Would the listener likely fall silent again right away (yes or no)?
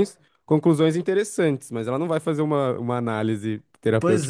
no